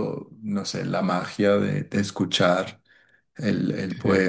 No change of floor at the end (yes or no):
no